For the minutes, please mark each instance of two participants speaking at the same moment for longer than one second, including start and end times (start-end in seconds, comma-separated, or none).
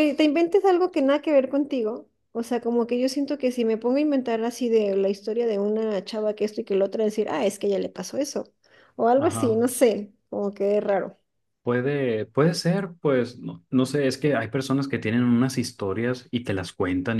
none